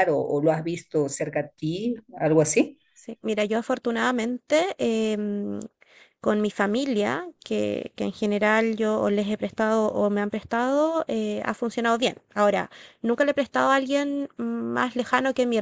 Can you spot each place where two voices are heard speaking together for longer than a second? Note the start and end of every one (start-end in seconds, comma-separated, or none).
none